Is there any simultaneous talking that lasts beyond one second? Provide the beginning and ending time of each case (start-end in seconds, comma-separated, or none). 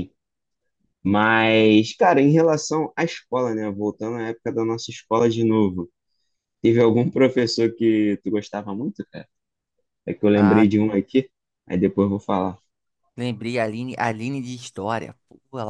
none